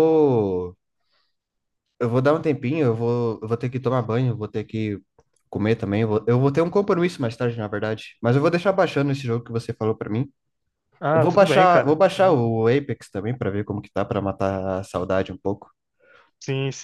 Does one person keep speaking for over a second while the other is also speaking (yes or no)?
yes